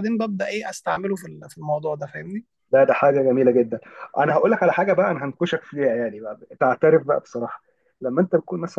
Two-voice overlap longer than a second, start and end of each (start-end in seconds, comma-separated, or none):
none